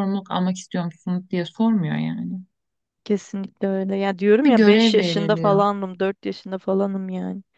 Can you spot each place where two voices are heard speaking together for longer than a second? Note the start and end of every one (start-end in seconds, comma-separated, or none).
4.4-5.7